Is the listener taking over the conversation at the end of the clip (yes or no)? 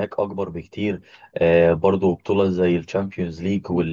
no